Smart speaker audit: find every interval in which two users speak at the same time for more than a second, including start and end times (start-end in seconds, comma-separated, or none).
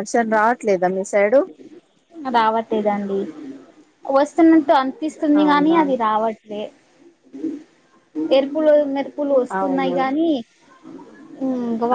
none